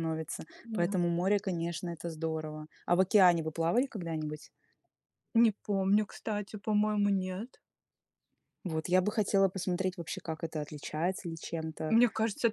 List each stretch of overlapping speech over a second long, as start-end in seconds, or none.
none